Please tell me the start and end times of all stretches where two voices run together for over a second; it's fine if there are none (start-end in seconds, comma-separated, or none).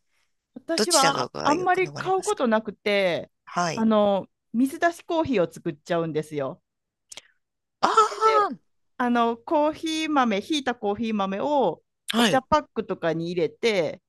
0.8-2.4